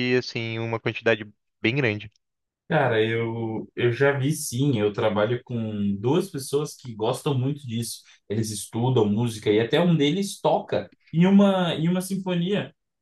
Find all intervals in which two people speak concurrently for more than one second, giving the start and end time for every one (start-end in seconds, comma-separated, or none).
none